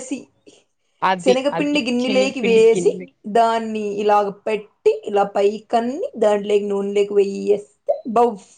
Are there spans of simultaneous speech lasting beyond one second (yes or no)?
yes